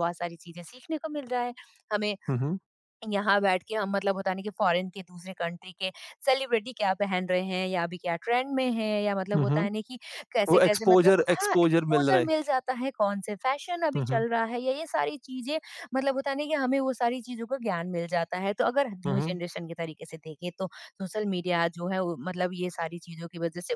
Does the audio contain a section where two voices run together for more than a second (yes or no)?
yes